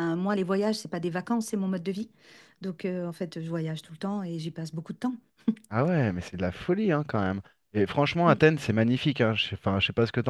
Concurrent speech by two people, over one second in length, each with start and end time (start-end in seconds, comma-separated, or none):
none